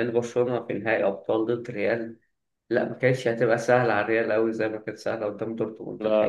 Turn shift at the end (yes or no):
yes